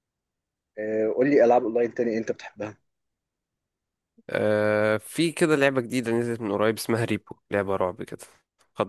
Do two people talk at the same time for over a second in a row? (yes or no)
no